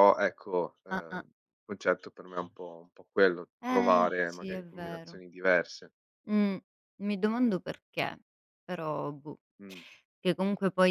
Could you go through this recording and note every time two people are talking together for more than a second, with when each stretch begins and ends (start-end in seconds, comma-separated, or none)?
3.6-5.2